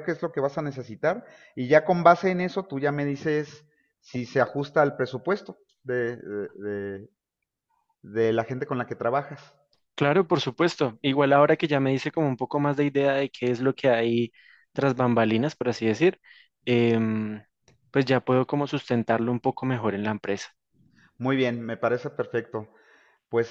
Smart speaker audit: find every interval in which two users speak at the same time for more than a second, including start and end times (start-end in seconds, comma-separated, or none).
none